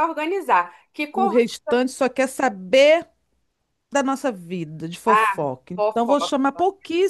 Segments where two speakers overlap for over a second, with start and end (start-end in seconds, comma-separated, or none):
5.0-6.3